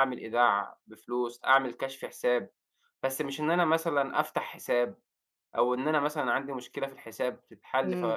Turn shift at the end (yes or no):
yes